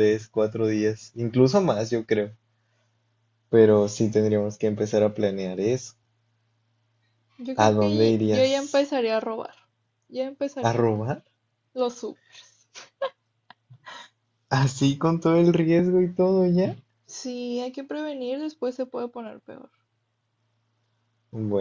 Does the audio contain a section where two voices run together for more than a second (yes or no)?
yes